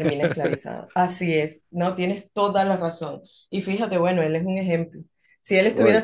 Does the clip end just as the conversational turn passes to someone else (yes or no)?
no